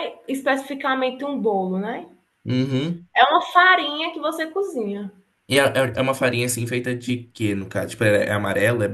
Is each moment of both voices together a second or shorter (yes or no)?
yes